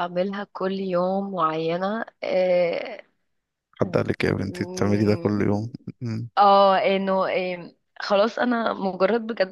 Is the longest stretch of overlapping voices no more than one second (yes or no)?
yes